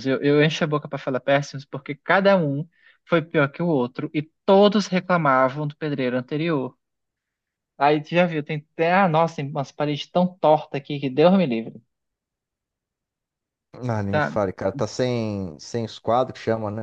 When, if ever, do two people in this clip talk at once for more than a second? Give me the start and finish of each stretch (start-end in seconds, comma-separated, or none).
none